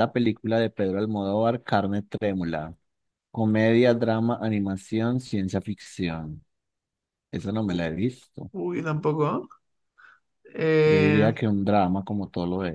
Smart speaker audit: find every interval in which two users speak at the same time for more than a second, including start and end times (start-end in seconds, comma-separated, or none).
none